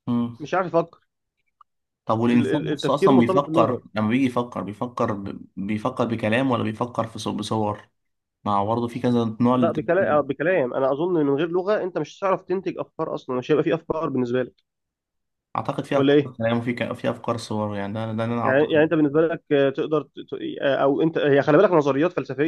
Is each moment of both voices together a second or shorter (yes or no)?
no